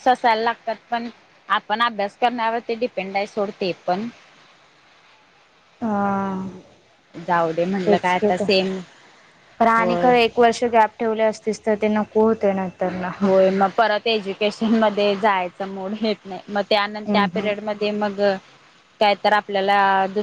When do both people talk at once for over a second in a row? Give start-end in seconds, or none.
none